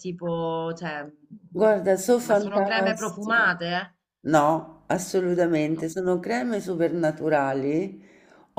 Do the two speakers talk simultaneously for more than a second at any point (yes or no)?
yes